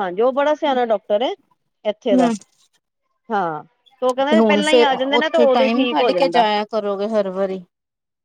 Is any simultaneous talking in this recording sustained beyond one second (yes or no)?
yes